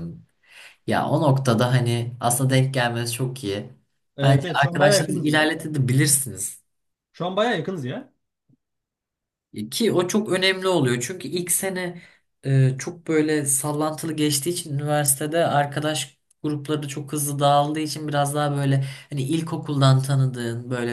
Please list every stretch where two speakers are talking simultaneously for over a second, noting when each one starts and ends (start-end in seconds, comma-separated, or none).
4.2-5.5